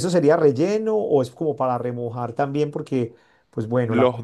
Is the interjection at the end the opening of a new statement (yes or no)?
no